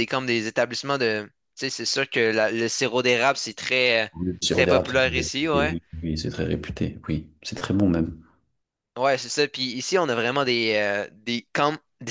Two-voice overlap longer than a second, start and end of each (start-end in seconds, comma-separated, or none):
4.5-5.8